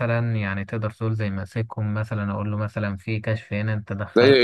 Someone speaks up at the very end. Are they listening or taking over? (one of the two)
taking over